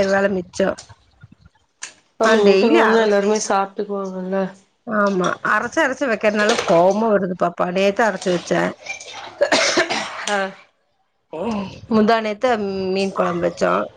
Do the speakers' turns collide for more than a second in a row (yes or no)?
no